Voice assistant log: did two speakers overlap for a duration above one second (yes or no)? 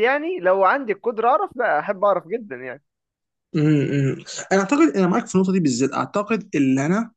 no